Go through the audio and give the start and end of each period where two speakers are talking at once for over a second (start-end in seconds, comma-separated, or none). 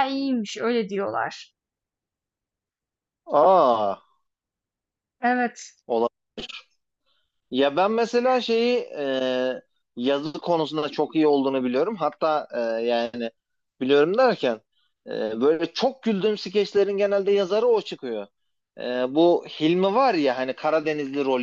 none